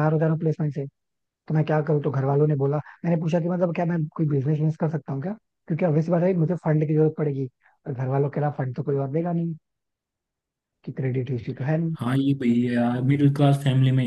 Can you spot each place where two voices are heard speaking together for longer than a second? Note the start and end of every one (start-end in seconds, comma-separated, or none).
none